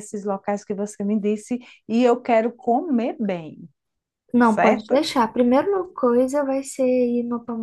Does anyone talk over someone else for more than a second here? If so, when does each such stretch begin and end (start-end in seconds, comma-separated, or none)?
none